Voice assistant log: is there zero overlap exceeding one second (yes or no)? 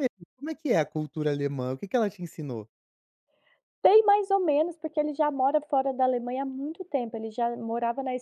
yes